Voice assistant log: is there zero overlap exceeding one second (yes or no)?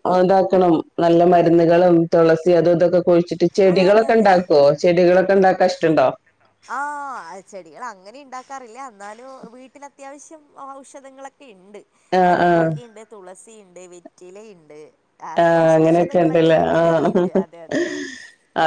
no